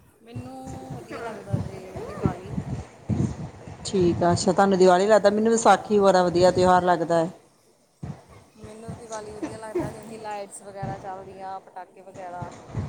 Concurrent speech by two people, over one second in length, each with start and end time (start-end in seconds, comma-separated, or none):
none